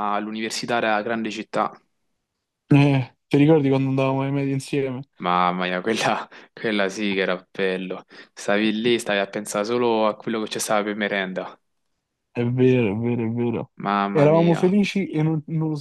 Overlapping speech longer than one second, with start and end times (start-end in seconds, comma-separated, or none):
none